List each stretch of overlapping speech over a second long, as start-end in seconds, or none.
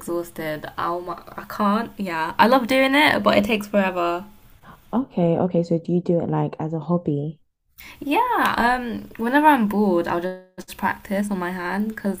none